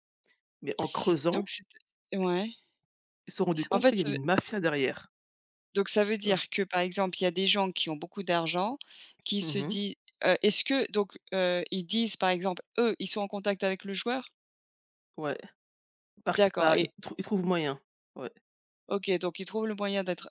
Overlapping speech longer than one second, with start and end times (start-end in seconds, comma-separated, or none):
none